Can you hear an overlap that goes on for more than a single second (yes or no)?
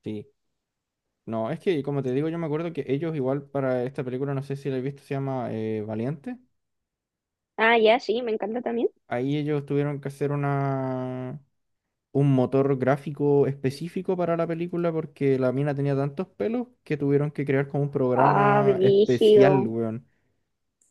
yes